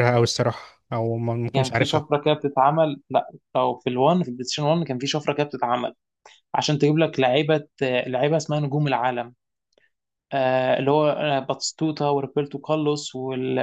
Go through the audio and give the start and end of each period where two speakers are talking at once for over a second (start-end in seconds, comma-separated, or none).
none